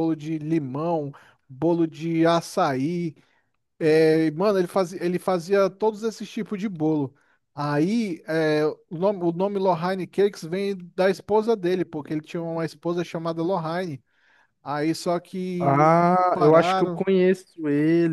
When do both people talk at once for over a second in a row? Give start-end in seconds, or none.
15.6-17.0